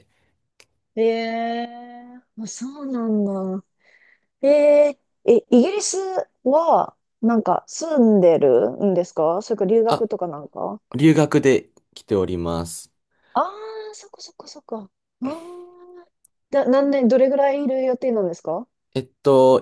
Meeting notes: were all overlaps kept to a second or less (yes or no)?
yes